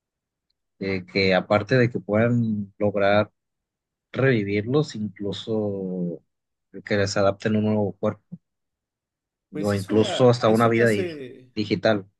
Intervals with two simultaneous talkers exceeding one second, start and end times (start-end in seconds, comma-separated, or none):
9.6-11.1